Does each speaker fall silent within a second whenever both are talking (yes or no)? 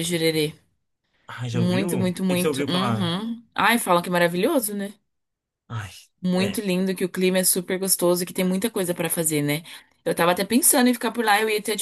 no